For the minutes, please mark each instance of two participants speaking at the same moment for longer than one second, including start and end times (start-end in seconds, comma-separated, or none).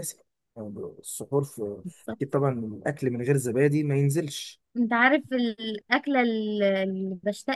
none